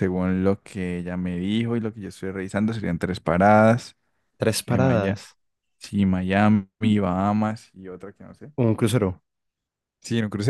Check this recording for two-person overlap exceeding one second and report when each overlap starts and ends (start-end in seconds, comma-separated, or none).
none